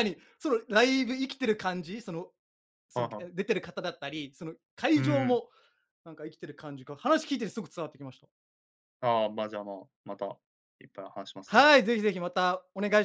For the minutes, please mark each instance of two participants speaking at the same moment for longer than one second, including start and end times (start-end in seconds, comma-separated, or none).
none